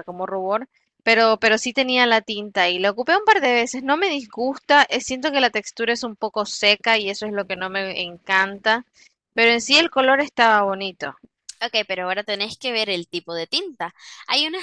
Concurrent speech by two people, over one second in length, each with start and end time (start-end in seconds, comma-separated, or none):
none